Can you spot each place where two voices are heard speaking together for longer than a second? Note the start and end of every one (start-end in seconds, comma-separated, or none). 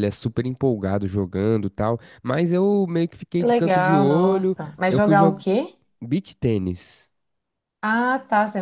3.4-5.4